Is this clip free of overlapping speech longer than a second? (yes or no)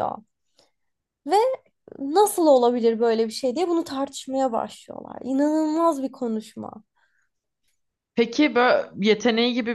yes